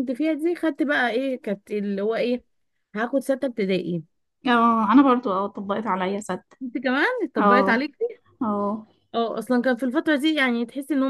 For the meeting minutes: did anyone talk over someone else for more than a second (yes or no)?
no